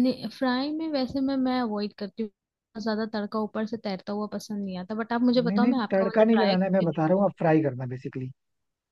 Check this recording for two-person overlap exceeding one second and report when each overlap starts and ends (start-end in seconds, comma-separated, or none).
5.5-7.2